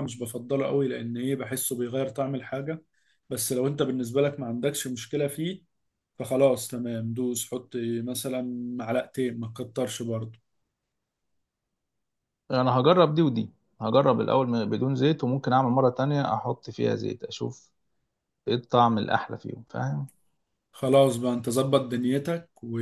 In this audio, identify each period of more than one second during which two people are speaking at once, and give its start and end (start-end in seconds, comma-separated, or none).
none